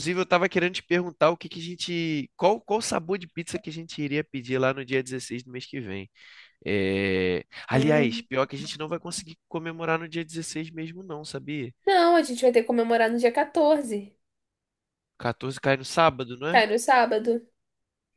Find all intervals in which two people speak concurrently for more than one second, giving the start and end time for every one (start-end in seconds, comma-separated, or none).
none